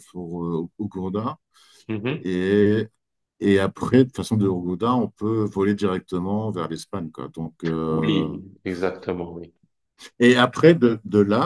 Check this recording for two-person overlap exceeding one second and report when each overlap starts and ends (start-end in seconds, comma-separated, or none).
none